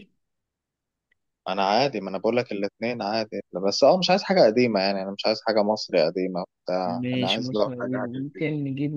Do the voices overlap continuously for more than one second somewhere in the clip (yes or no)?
yes